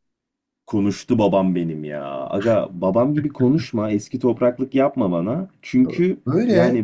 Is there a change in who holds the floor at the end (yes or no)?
no